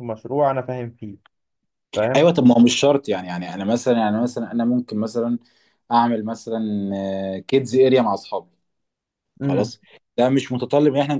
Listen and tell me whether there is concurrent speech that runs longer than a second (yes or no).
no